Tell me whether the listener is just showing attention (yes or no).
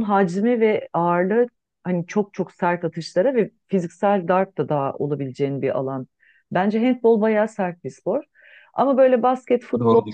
yes